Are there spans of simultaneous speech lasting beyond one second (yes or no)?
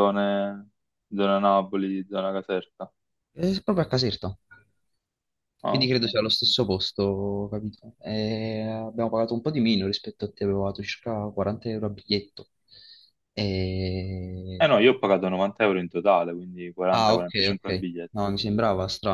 yes